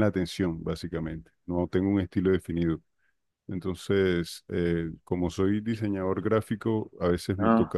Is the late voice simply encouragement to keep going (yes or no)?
yes